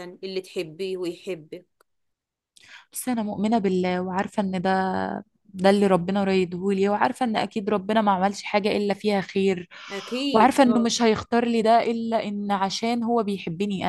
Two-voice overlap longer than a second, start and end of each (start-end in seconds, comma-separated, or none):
none